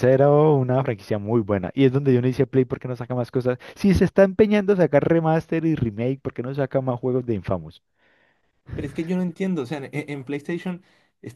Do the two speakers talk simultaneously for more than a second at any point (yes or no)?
no